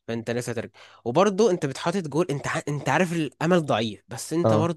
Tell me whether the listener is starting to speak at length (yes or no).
no